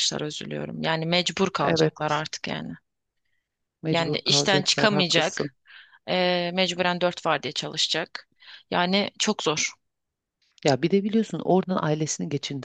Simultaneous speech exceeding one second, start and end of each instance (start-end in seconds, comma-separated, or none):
3.9-5.5